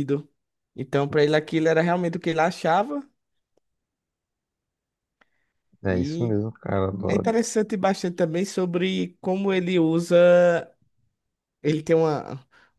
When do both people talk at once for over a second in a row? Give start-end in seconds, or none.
none